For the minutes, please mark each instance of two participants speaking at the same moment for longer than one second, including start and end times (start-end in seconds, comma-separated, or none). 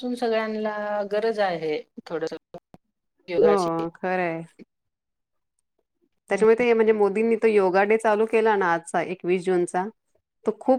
none